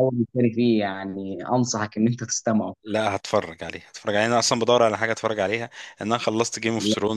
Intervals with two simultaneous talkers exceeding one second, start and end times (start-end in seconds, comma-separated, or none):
none